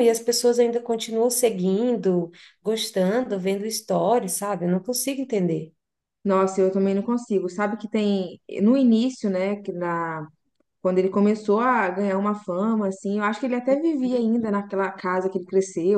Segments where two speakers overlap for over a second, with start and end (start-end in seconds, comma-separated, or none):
none